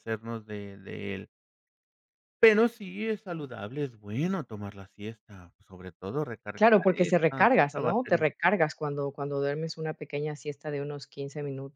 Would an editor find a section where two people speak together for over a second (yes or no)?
yes